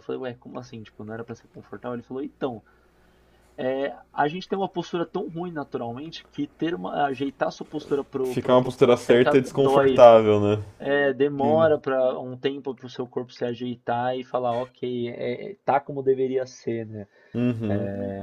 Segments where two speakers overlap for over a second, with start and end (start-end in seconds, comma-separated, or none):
8.2-10.0